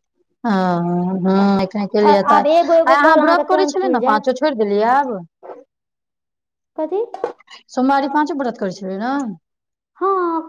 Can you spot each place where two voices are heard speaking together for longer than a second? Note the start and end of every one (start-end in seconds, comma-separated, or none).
2.4-4.3